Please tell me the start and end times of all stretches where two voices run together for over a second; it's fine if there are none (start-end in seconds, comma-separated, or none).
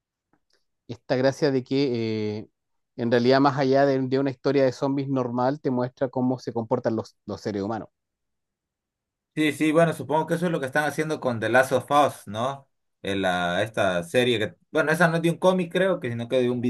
none